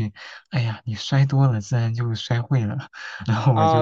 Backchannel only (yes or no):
no